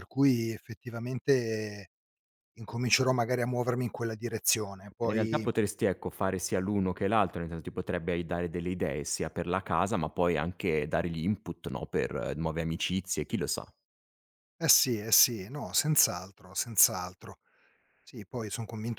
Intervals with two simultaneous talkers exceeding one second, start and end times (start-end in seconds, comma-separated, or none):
none